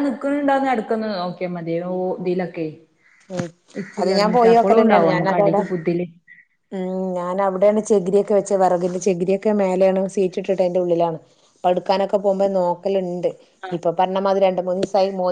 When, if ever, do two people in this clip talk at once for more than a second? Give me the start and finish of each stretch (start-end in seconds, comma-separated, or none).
4.0-5.6